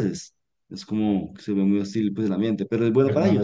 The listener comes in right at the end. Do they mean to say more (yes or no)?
yes